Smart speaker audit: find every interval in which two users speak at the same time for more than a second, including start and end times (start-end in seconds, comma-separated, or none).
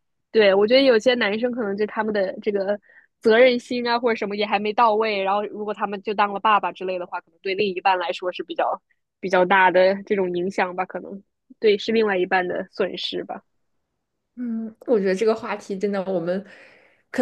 none